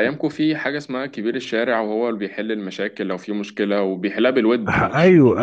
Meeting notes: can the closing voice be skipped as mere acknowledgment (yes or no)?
no